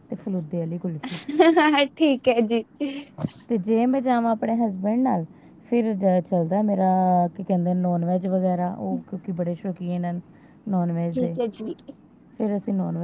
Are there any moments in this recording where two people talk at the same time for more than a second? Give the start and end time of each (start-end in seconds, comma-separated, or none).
none